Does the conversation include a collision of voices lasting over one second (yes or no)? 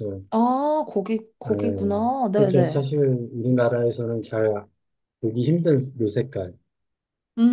yes